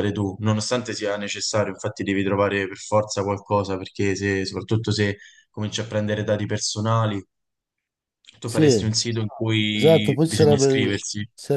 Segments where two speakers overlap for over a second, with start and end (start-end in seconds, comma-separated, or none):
9.7-10.9